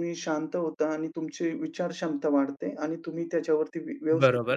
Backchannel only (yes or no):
no